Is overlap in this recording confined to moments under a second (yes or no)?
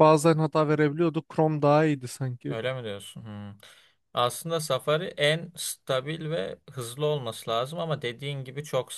yes